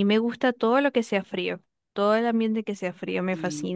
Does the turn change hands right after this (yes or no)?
yes